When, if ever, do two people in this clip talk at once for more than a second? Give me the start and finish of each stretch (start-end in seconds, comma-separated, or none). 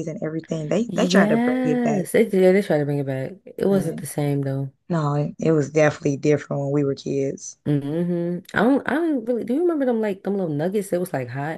0.9-2.1